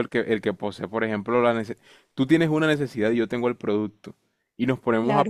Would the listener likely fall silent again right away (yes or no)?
yes